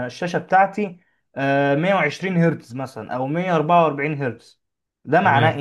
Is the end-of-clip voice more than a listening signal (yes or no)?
yes